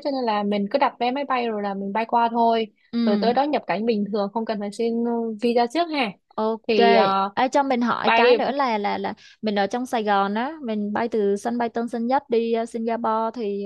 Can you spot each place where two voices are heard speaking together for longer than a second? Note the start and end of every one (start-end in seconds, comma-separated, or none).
none